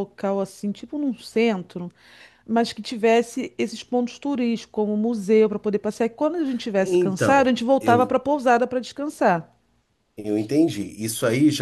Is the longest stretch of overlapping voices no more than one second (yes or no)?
no